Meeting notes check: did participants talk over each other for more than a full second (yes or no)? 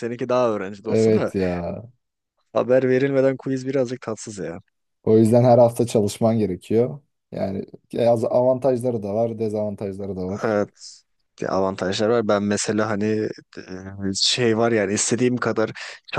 no